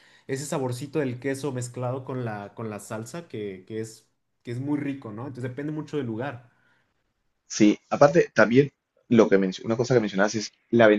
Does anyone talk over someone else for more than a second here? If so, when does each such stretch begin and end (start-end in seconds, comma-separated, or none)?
none